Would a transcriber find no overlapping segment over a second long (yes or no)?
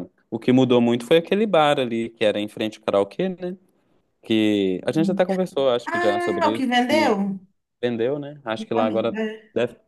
no